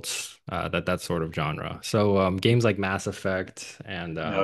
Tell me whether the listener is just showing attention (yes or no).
yes